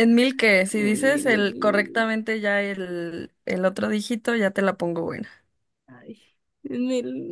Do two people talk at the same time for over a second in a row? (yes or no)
yes